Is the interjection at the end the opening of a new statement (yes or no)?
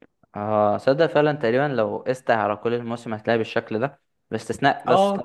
no